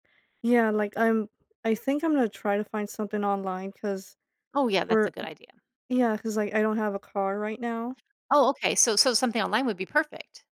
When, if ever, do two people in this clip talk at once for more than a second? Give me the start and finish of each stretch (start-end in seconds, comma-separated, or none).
none